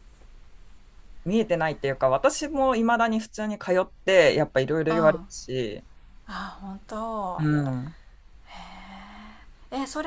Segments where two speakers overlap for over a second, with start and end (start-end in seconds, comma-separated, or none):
none